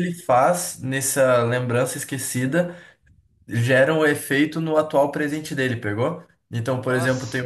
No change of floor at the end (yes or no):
yes